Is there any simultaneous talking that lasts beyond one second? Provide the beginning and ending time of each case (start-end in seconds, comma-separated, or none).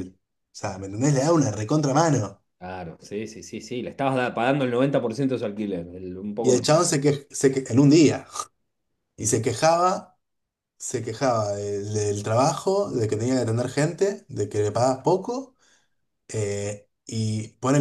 none